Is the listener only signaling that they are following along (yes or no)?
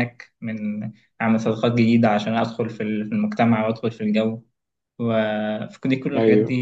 yes